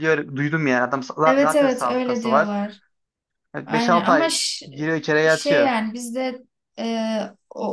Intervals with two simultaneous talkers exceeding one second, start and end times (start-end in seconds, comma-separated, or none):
1.2-2.5, 3.7-5.7